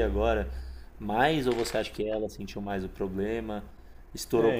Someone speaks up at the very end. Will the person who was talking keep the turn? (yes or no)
no